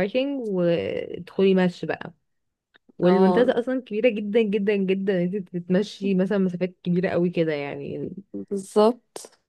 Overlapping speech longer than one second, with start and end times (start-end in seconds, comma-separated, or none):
none